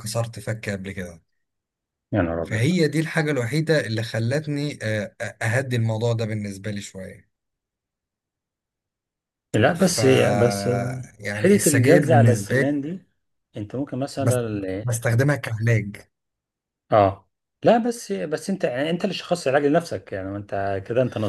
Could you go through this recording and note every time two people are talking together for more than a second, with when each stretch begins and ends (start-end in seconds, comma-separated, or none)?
11.3-12.7